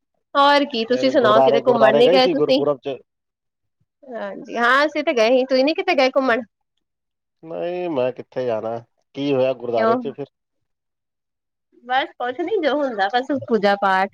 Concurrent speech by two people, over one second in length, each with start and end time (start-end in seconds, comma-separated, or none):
0.9-2.6